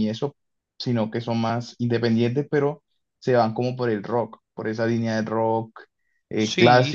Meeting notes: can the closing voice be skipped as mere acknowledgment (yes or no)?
yes